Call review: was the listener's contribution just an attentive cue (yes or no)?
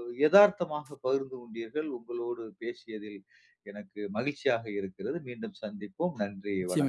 no